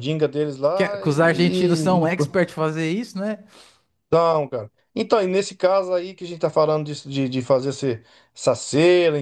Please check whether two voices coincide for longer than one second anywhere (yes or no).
yes